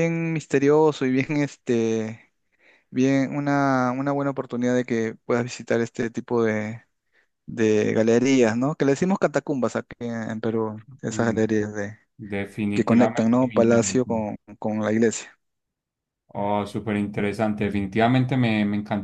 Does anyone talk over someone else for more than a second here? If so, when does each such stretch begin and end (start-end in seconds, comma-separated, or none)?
12.7-14.2